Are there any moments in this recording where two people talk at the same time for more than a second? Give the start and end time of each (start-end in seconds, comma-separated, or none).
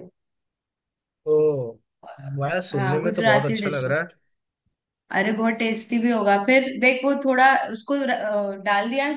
2.7-3.9